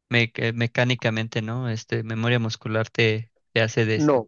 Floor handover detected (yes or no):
yes